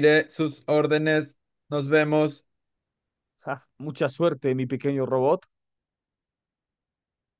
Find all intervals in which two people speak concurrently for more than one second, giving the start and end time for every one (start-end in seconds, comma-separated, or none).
none